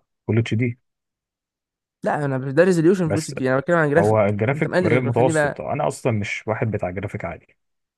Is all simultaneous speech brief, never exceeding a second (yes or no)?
no